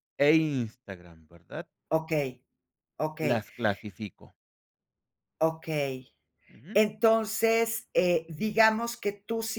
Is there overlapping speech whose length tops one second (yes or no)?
no